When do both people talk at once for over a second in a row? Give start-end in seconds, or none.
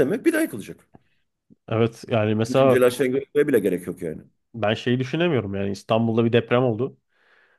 none